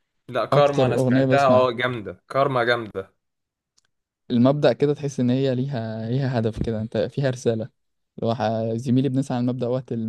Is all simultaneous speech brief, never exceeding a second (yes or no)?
no